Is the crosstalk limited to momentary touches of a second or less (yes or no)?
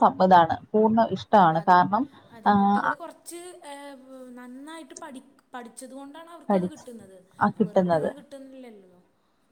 yes